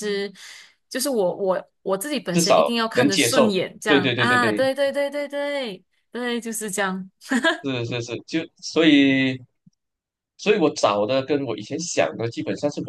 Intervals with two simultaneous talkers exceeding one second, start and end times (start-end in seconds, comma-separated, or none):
2.3-4.7